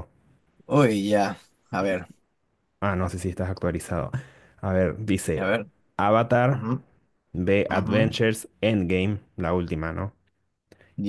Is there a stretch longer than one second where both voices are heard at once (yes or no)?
no